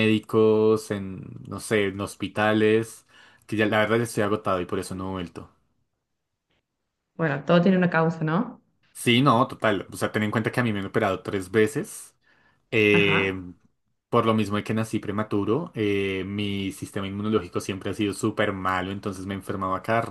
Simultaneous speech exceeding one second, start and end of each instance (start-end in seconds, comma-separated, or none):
none